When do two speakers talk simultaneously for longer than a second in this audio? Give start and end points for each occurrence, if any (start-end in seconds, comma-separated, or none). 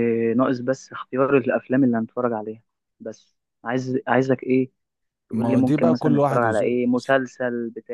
5.3-7.2